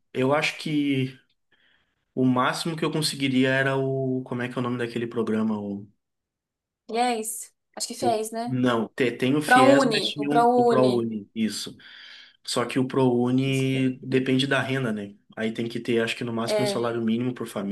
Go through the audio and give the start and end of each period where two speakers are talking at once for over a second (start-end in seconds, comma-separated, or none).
9.4-11.1